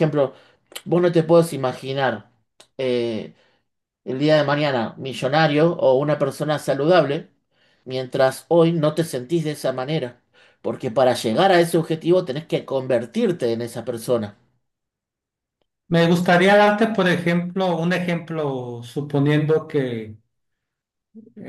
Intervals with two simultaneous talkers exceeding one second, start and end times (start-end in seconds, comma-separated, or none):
none